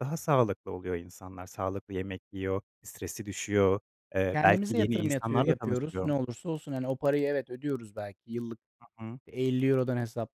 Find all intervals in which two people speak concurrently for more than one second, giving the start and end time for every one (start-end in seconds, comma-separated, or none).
4.3-6.1